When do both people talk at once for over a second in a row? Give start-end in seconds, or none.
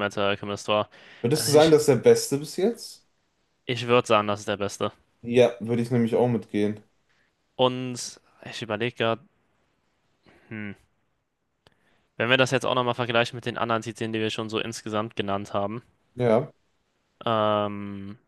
none